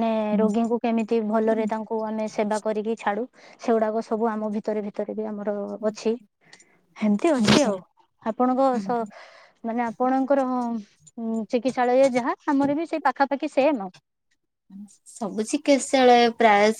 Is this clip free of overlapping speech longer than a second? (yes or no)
yes